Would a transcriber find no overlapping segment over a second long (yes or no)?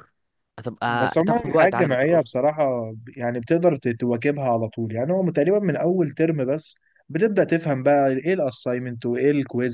no